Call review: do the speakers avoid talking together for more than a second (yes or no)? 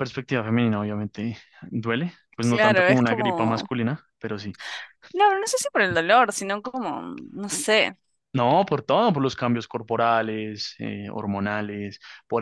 no